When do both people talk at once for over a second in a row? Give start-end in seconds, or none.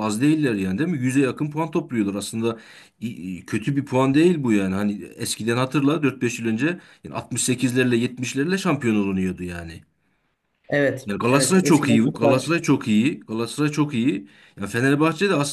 11.1-12.5